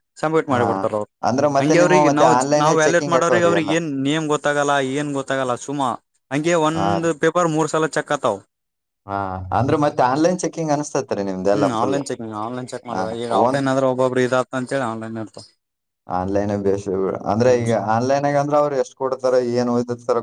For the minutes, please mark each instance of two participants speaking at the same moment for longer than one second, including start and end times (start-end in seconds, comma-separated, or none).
1.6-3.7